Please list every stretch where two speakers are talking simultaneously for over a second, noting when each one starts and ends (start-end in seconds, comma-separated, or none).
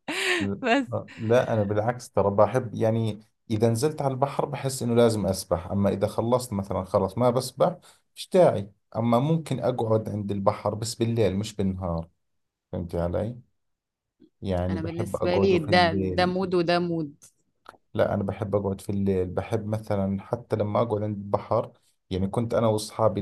14.7-16.4